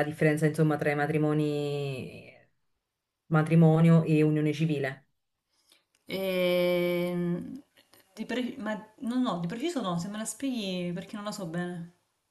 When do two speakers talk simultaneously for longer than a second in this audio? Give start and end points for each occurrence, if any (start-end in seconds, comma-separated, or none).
none